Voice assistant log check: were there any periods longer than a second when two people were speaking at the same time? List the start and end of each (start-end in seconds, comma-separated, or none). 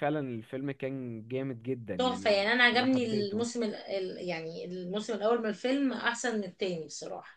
2.0-3.5